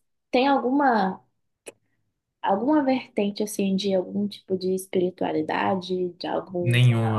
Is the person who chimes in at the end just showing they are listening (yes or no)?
no